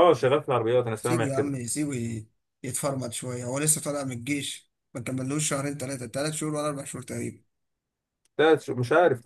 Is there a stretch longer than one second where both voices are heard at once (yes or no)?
no